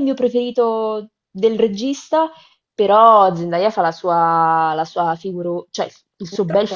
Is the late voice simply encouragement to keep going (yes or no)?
no